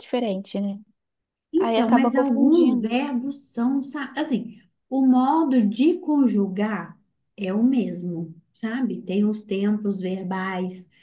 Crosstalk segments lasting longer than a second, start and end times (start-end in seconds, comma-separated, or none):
1.6-3.0